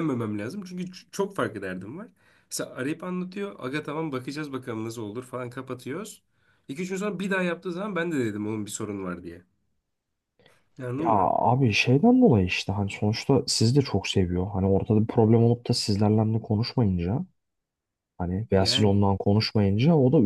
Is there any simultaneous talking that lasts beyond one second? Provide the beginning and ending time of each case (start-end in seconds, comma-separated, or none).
none